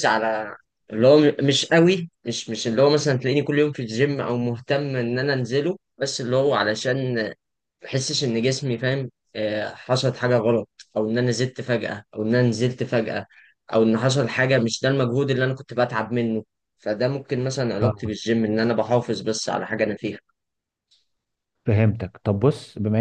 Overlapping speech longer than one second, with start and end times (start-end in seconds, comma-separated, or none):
none